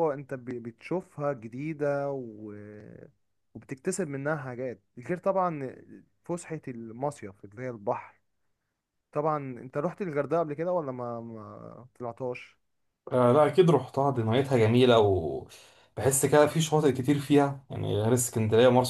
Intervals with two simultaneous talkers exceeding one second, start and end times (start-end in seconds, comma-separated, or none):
none